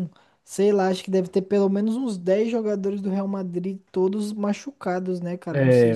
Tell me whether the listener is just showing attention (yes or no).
no